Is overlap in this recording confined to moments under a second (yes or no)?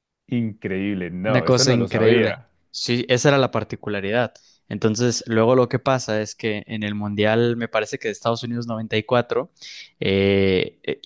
no